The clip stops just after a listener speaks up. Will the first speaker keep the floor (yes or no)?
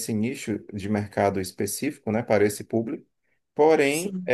yes